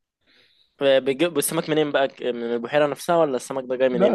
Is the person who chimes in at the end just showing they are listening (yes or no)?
no